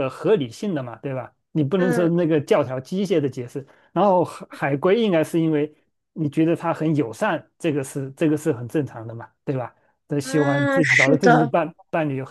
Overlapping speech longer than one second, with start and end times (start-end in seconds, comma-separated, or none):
10.2-11.5